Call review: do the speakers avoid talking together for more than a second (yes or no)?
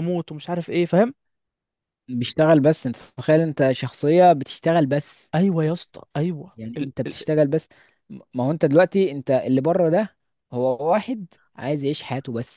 yes